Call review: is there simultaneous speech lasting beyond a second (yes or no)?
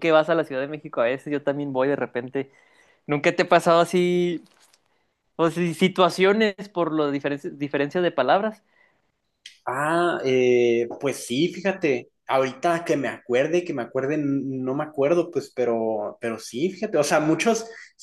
no